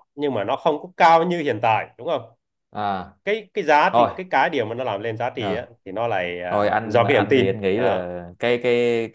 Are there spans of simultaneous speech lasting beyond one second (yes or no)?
yes